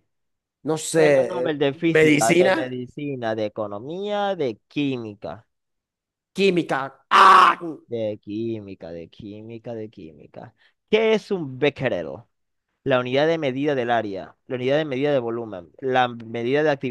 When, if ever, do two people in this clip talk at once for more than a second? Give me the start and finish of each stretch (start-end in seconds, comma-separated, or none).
0.9-2.8